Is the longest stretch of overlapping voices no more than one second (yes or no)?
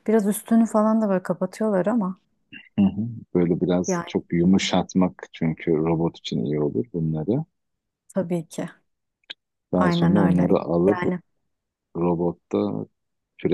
no